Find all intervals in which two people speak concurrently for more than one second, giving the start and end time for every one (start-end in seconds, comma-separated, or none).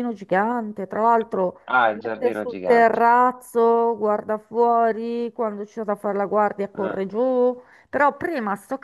1.7-3.0